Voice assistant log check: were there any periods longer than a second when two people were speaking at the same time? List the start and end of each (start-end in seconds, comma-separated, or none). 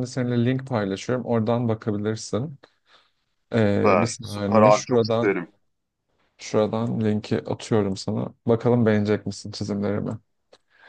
3.6-5.3